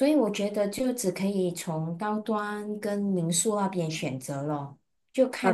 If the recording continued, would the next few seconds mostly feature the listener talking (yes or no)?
yes